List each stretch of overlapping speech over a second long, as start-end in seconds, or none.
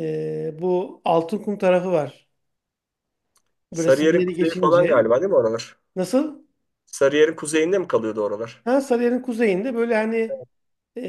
3.7-5.1